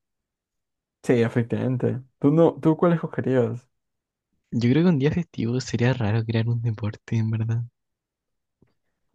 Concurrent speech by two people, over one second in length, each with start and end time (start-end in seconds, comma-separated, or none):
none